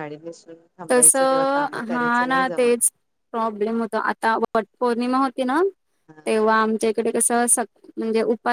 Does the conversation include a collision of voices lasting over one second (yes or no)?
yes